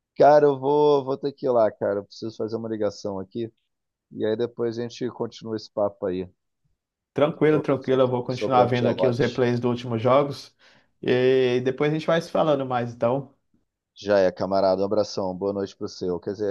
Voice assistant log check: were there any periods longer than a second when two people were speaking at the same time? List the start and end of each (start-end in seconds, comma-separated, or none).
7.4-9.4